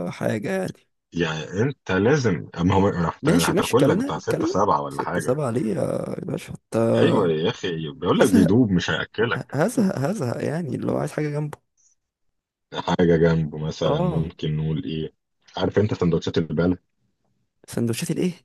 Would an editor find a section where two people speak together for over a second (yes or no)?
yes